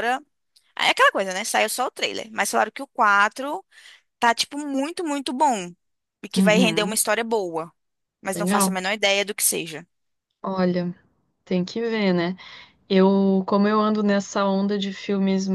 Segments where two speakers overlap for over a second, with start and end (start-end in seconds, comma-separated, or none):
none